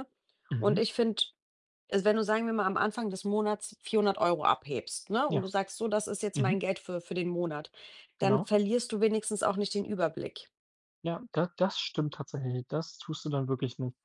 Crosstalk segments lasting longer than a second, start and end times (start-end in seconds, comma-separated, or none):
none